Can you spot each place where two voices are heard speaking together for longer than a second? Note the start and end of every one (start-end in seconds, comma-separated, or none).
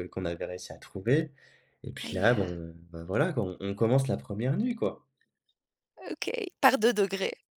none